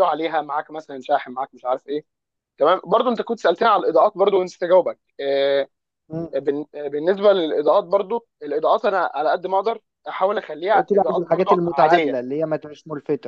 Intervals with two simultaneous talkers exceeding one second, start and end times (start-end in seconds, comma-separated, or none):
10.7-12.2